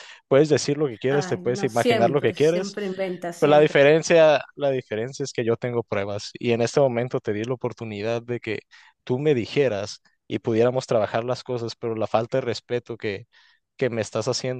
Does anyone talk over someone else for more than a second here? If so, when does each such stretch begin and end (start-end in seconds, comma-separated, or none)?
1.1-2.7